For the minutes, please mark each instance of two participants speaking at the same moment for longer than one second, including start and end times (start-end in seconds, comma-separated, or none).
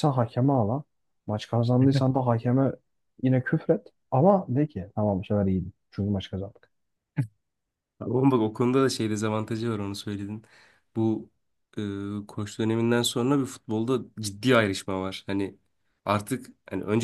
none